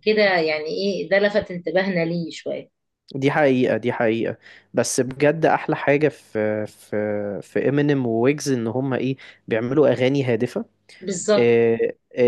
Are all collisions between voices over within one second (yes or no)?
yes